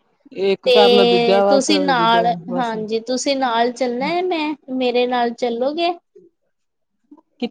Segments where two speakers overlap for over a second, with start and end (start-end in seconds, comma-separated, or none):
0.6-2.7